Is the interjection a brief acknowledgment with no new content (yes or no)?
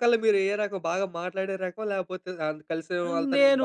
no